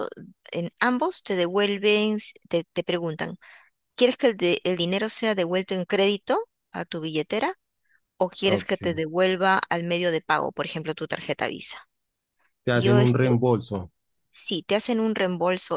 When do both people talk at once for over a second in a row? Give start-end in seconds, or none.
none